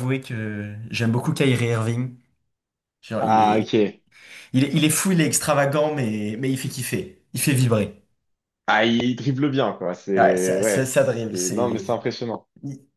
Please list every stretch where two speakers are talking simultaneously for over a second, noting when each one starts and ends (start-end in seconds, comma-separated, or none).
10.2-12.0